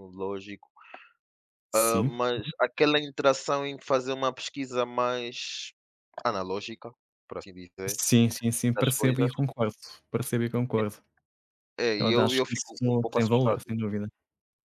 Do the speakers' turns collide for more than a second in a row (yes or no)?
yes